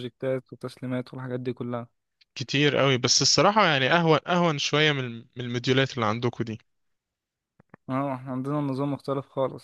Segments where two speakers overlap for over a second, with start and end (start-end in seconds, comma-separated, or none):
none